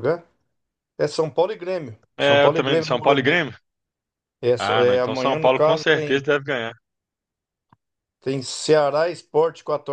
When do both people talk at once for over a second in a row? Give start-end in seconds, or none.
2.2-3.4, 4.6-6.2